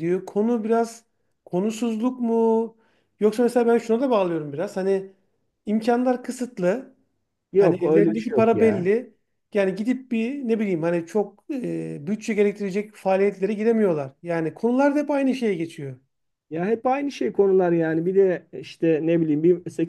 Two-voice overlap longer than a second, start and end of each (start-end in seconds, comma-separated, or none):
7.6-8.9